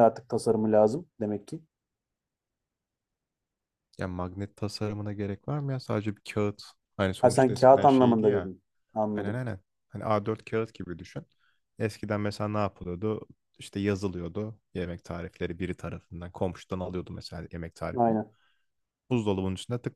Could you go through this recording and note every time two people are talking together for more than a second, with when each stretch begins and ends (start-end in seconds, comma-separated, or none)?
7.2-8.5